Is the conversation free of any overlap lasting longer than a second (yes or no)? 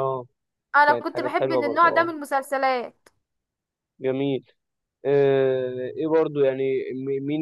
no